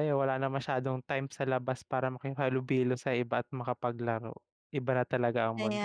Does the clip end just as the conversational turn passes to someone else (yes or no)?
yes